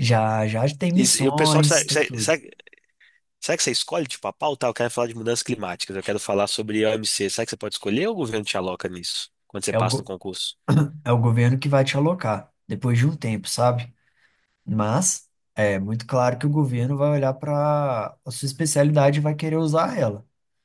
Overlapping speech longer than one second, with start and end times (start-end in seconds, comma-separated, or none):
0.9-2.3